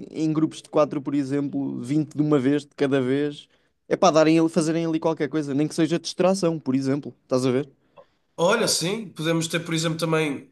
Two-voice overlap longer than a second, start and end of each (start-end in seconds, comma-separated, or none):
none